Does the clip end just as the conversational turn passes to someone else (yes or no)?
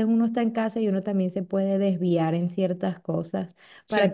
no